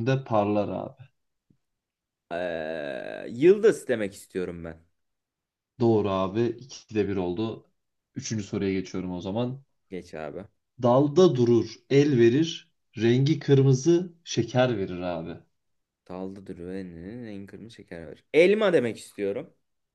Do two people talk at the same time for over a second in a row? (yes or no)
no